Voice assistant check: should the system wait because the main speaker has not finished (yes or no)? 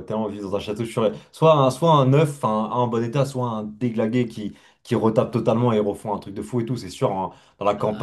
yes